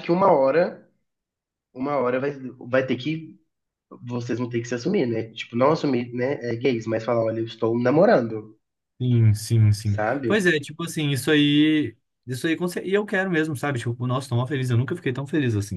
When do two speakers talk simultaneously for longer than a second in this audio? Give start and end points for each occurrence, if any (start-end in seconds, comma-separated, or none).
none